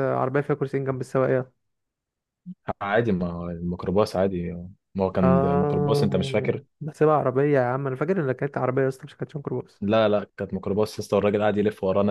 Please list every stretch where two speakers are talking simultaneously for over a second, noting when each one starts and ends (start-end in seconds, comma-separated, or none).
5.2-6.6